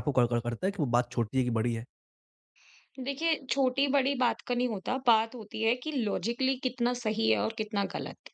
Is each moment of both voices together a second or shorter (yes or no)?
yes